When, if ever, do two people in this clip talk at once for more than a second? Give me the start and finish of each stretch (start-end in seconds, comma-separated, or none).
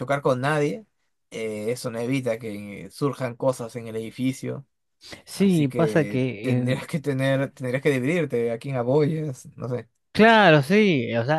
5.4-6.8